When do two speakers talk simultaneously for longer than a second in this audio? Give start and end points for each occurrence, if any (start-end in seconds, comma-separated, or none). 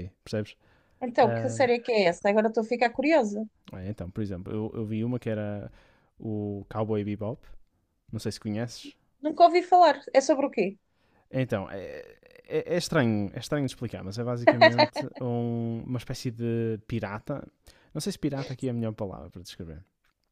none